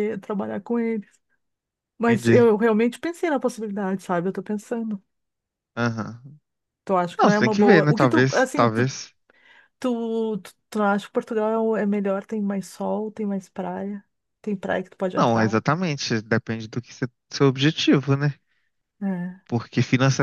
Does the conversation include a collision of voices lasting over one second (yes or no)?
yes